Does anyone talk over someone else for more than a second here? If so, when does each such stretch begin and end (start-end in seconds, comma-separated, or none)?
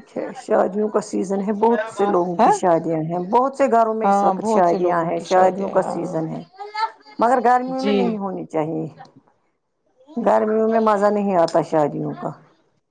4.0-6.2